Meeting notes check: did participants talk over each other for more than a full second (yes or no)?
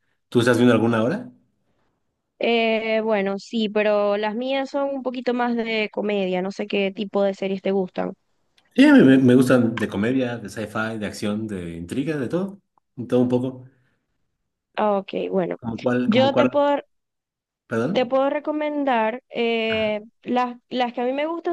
no